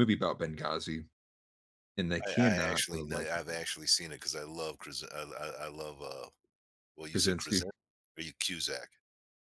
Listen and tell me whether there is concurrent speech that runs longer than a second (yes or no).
yes